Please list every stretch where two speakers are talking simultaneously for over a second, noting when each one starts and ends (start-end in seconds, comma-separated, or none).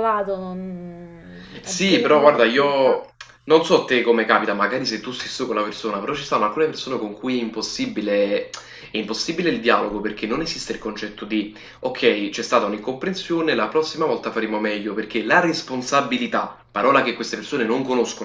1.6-3.0